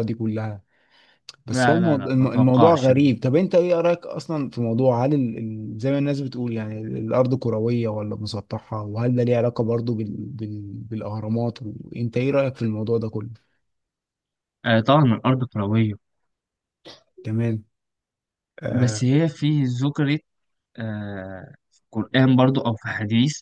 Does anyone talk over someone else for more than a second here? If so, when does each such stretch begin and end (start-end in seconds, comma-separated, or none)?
1.5-2.9